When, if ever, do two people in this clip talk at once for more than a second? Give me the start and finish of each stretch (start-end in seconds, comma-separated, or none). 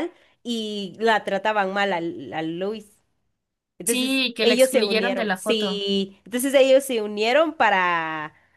3.8-5.8